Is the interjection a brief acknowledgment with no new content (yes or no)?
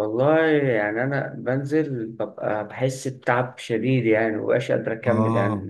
no